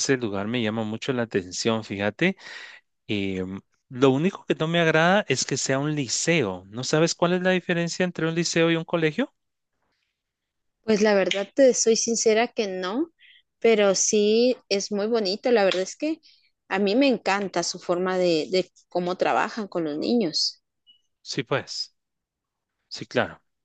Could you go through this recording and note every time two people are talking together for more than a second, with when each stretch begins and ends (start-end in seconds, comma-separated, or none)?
none